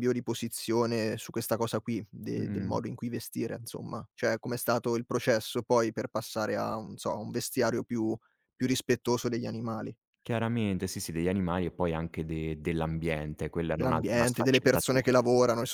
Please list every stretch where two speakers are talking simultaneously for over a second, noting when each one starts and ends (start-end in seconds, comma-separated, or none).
13.7-15.2